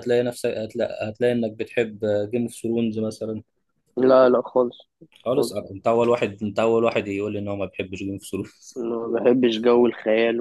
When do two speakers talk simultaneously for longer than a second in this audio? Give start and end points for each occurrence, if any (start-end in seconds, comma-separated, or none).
none